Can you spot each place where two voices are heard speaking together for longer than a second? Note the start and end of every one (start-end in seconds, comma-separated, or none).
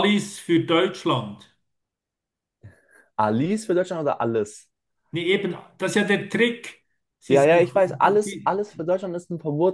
none